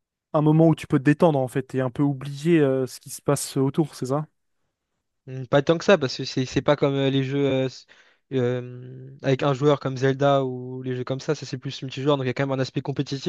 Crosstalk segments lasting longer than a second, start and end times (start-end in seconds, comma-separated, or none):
none